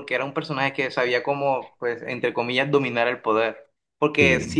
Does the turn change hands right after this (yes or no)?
no